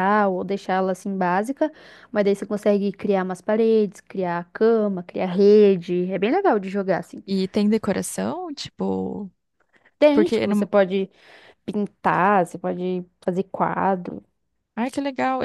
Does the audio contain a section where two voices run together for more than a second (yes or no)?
no